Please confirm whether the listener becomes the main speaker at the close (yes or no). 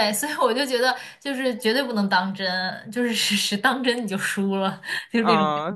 yes